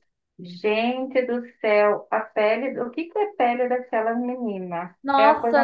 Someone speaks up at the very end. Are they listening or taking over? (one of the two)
taking over